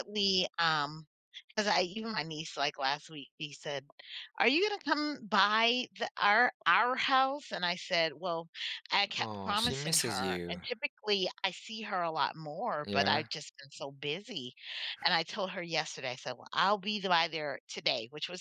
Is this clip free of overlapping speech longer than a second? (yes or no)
no